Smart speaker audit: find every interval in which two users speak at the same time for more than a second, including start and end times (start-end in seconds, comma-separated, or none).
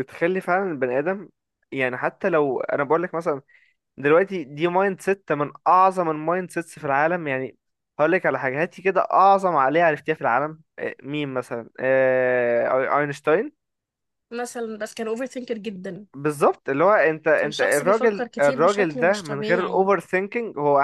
17.4-19.9